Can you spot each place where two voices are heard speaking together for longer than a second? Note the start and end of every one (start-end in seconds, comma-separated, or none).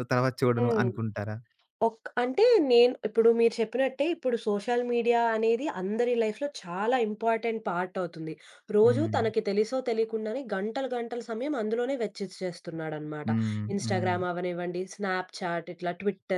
none